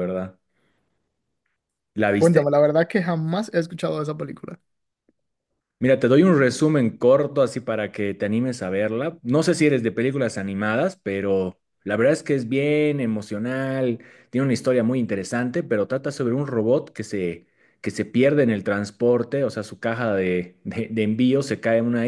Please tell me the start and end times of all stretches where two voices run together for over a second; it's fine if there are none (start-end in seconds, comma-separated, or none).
none